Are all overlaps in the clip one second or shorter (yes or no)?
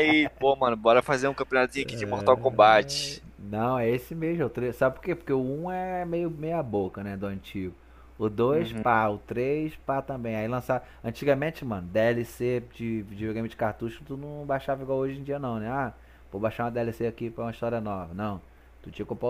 no